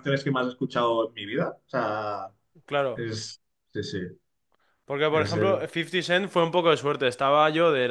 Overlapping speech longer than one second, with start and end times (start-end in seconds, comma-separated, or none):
none